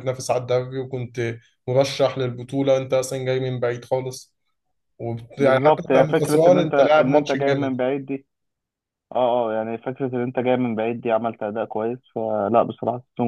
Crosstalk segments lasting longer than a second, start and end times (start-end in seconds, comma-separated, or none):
5.4-7.8